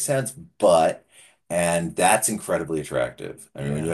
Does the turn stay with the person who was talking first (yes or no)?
yes